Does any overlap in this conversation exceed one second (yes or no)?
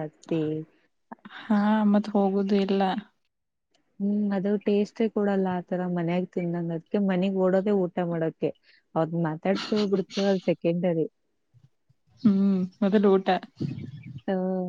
no